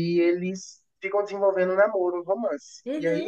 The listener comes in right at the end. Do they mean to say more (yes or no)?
no